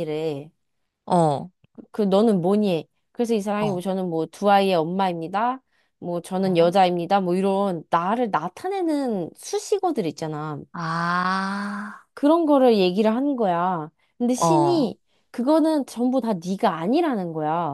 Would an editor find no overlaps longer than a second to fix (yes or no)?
yes